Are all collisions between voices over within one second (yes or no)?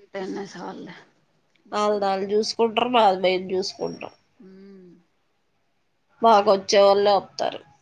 yes